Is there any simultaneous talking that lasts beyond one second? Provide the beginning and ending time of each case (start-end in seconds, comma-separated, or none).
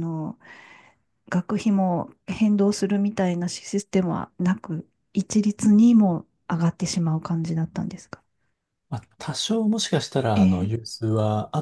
none